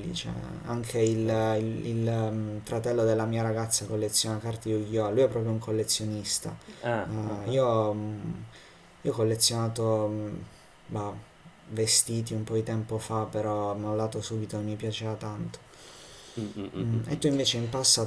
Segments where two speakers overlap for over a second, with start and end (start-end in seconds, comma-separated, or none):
none